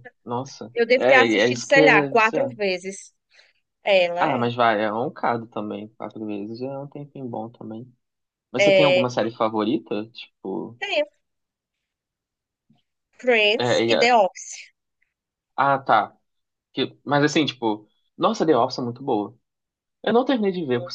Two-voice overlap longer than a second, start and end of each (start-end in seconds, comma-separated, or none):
0.7-2.6